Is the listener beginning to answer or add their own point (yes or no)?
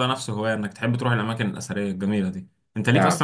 no